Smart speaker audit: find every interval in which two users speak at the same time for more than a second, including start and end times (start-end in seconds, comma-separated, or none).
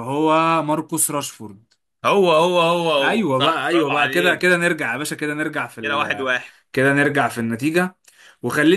3.0-4.5